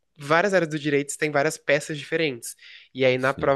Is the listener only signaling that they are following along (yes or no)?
yes